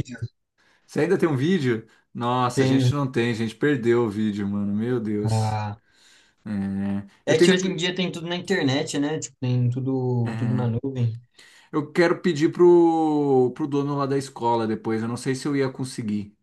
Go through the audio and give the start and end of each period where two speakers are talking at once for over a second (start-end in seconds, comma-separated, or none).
none